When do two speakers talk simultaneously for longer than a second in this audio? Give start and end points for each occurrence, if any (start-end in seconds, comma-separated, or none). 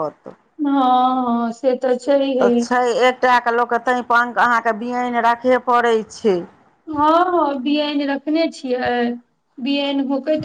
none